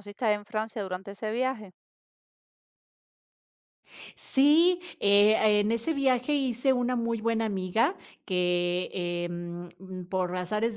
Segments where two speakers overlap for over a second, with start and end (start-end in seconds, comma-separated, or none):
none